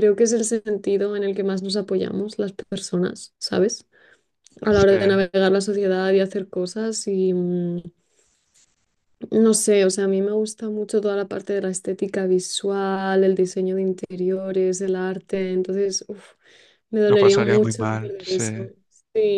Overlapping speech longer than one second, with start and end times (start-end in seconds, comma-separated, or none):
17.1-18.4